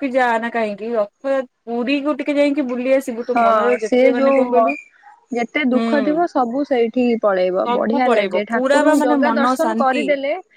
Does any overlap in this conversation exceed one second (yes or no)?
yes